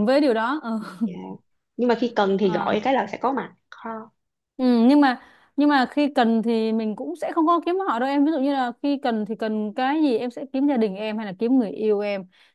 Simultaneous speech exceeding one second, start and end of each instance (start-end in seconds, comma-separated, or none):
none